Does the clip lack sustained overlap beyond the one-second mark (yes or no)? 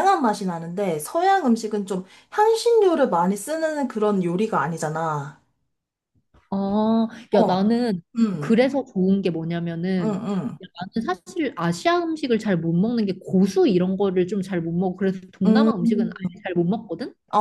yes